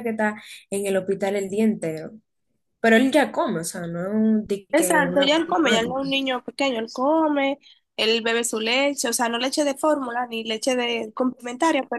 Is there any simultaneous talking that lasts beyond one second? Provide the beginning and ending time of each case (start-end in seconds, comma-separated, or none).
4.7-6.1